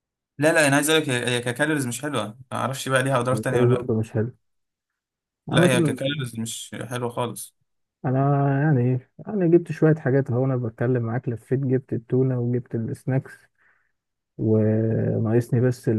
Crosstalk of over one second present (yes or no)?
no